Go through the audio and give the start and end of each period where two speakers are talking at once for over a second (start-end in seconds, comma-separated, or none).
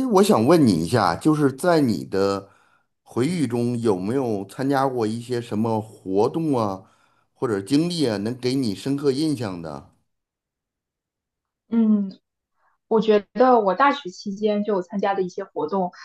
none